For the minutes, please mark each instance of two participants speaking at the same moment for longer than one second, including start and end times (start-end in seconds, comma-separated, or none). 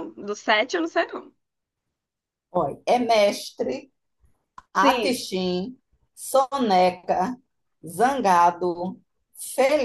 none